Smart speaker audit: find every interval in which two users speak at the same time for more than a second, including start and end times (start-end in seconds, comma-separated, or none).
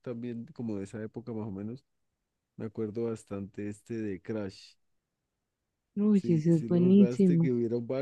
6.1-7.5